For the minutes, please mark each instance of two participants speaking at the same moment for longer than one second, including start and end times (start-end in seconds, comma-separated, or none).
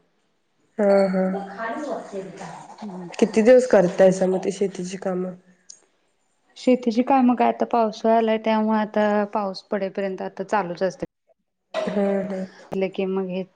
none